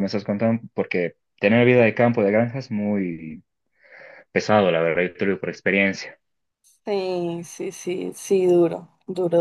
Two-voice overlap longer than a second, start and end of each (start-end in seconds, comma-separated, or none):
none